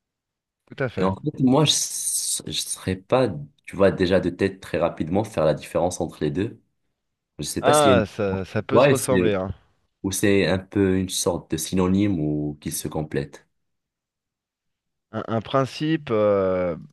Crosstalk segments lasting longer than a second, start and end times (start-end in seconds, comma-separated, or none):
7.6-9.3